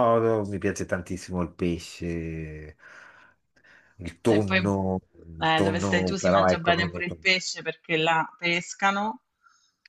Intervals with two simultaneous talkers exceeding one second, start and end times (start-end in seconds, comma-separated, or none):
5.4-7.2